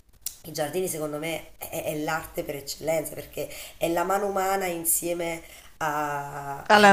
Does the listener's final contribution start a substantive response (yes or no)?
no